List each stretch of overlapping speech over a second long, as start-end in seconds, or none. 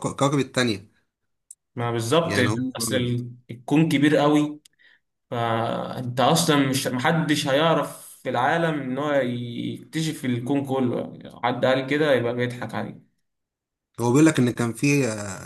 none